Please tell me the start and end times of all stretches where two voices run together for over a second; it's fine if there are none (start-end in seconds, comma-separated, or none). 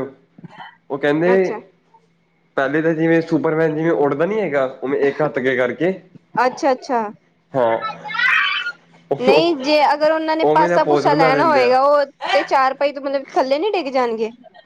10.5-11.8